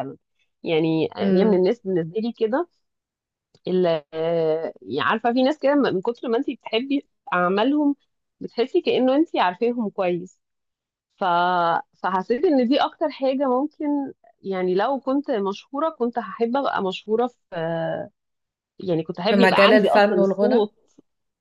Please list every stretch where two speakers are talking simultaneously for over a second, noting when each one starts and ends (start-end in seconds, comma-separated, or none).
19.3-20.7